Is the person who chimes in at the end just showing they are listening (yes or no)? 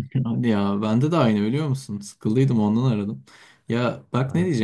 yes